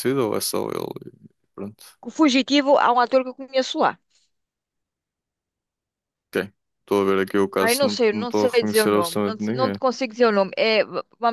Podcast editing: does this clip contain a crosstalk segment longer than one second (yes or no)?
yes